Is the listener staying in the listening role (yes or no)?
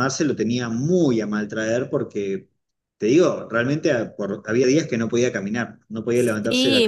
no